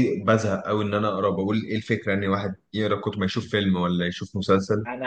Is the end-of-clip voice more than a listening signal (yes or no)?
yes